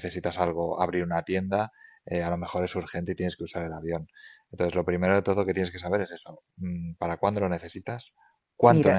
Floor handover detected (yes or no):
yes